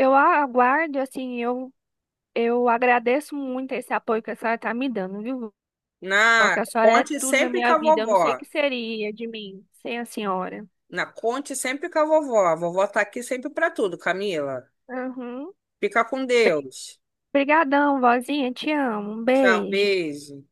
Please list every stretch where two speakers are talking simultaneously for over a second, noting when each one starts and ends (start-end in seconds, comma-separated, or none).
6.4-8.4